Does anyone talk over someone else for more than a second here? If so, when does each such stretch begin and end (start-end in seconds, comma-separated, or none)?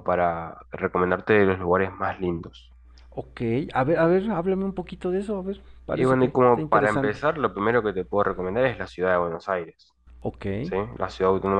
5.9-7.2